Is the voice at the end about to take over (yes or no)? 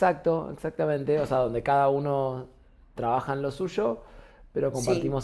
no